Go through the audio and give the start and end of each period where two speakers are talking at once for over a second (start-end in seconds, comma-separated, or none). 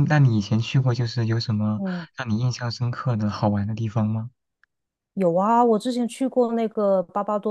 none